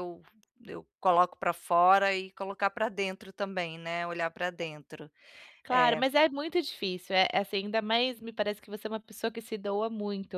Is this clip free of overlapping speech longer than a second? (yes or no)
yes